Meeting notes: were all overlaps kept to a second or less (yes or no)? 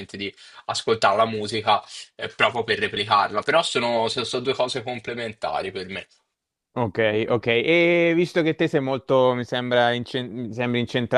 yes